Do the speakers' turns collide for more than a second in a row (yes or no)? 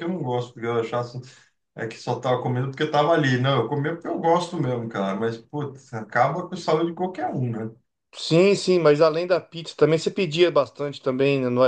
no